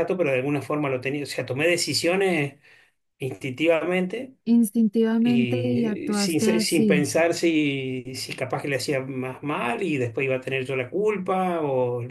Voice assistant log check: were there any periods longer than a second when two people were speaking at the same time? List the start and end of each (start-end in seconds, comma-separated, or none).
5.2-7.0